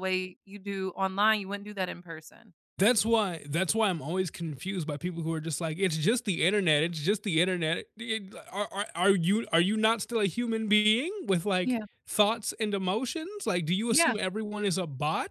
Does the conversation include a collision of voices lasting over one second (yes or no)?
no